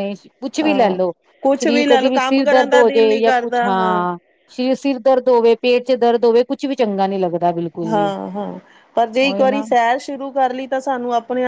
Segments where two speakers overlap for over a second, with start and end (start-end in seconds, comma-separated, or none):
1.6-3.6